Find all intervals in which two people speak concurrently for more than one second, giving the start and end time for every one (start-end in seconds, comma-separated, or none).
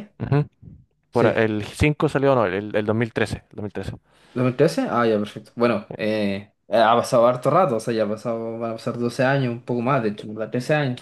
none